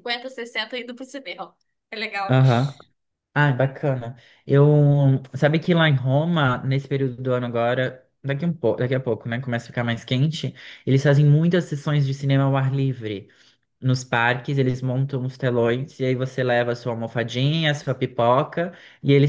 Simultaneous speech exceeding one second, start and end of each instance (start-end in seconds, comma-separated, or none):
none